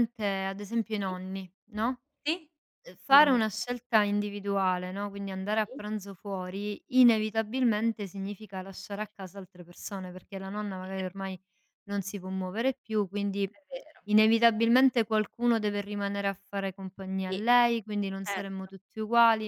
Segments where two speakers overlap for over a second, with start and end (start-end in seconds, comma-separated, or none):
none